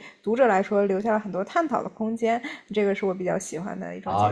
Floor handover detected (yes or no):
yes